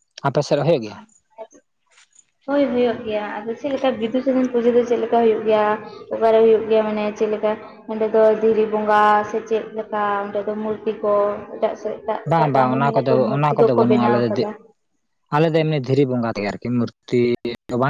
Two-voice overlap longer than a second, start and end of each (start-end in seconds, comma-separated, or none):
12.3-14.3